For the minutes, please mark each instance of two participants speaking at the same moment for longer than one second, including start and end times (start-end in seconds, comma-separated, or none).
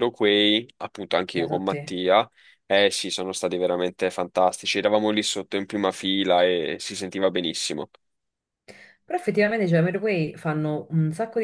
none